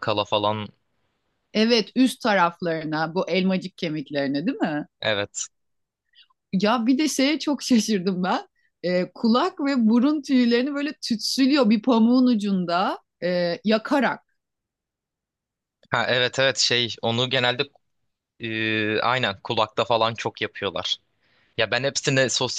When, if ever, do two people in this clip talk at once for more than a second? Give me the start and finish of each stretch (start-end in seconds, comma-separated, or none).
none